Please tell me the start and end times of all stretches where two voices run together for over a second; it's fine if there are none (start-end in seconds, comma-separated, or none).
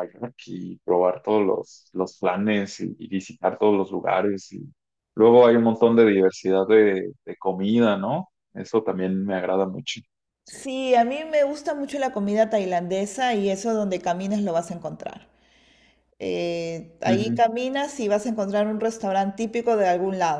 none